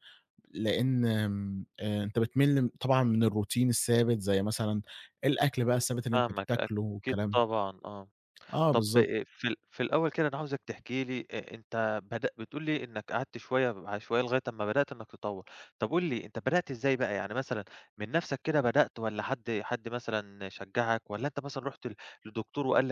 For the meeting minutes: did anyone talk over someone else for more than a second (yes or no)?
yes